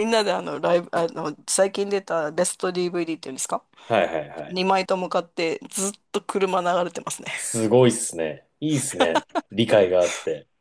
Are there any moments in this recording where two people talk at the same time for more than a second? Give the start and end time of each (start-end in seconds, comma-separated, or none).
none